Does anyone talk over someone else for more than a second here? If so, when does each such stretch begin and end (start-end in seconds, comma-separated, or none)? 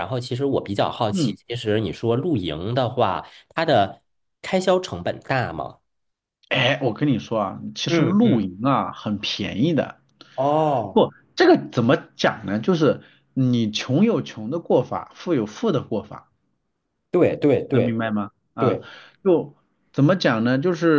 none